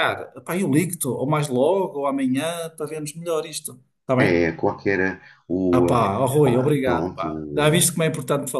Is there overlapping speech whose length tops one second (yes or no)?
yes